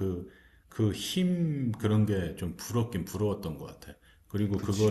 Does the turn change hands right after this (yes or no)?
no